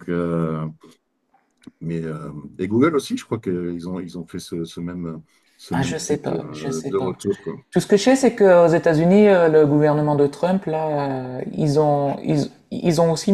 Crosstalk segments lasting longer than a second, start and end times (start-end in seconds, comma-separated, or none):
5.7-7.1